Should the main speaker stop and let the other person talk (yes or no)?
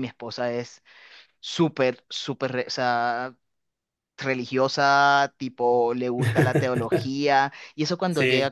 no